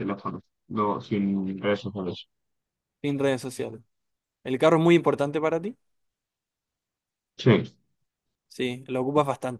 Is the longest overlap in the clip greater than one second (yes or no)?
no